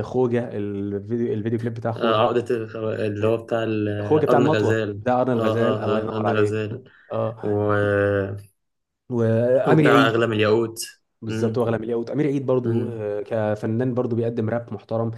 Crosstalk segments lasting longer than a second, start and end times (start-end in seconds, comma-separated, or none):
4.3-6.6